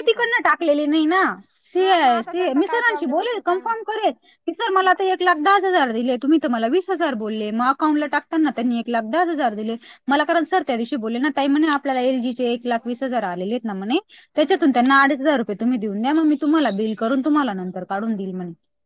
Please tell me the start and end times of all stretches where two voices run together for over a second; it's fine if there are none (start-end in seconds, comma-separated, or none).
1.8-3.9